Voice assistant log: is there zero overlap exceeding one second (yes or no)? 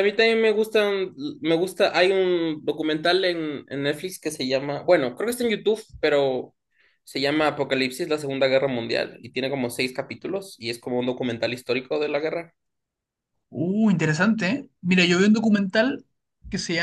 yes